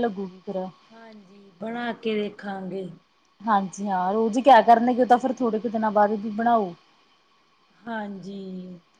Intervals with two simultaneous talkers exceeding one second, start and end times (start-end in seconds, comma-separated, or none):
none